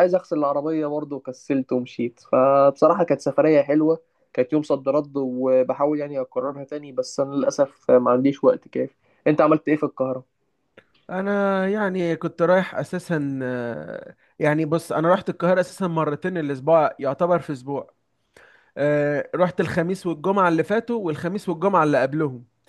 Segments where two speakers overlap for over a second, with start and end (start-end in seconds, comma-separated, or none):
none